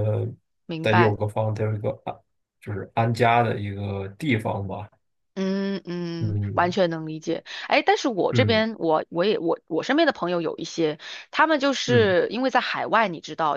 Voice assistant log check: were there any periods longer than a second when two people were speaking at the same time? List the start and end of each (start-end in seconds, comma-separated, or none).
none